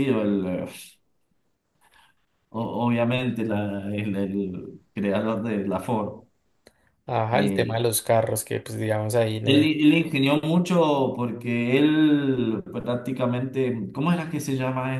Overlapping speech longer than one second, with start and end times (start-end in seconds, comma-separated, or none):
none